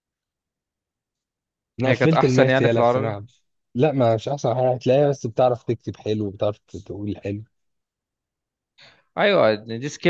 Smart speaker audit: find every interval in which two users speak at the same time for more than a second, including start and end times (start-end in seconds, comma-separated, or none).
1.9-3.2